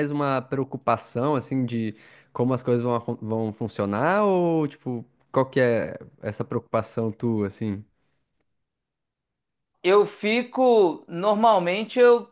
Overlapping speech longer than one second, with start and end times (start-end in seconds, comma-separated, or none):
none